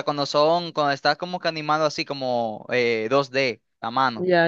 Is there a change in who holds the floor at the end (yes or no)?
yes